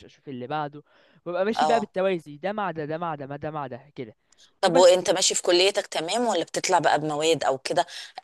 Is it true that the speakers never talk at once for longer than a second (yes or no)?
yes